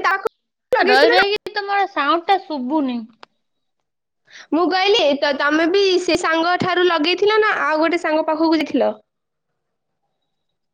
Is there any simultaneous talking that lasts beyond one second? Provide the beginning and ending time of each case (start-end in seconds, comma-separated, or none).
none